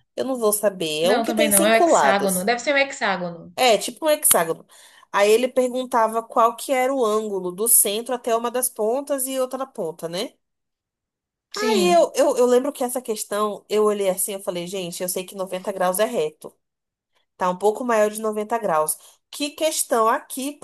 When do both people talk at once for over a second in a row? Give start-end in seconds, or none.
1.0-2.5